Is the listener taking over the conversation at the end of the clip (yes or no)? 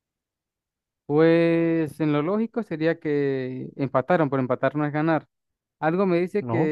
no